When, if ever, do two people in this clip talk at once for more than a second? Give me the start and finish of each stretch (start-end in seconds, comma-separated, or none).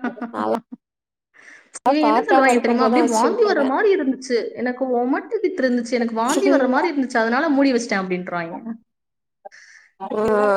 2.1-3.7